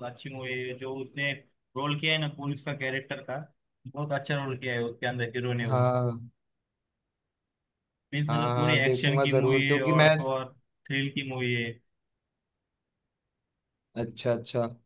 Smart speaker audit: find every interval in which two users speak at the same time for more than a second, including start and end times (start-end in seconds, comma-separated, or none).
8.3-10.1